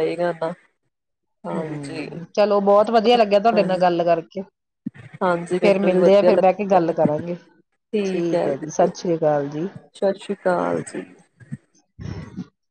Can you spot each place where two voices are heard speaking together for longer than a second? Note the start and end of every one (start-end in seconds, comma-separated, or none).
5.2-6.5